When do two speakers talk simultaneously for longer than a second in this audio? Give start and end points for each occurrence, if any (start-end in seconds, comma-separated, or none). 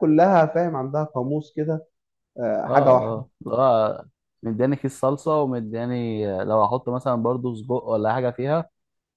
none